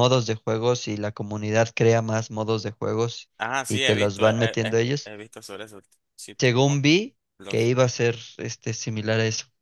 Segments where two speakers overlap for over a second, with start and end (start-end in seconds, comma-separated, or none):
3.7-5.1